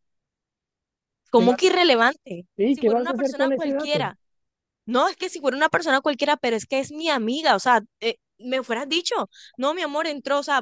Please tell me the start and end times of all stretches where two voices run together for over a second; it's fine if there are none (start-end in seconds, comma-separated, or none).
2.6-4.1